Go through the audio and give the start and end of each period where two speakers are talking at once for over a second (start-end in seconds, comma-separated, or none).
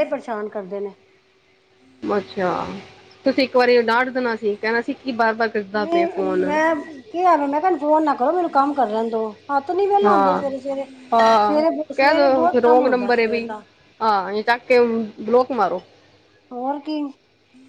11.5-13.5